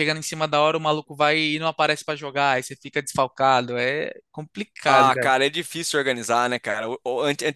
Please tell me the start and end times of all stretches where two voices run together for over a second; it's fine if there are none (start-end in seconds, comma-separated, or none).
none